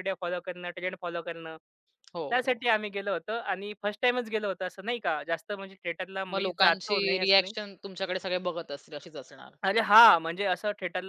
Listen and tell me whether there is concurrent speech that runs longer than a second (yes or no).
yes